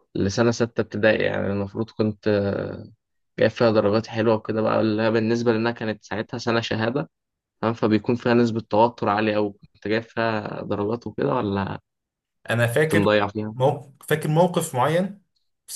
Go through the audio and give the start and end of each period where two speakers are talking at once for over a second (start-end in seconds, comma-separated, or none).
none